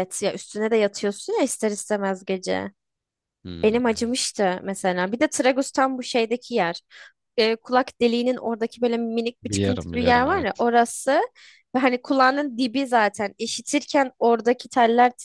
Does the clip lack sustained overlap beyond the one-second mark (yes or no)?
no